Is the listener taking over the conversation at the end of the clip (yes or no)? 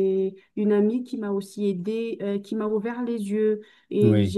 no